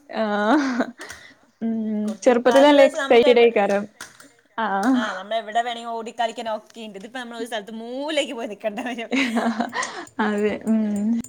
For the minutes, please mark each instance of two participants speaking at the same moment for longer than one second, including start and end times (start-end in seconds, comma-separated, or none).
2.2-3.5